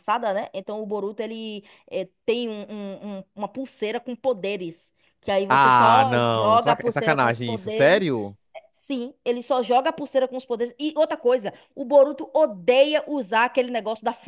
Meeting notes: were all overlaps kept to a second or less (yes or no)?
no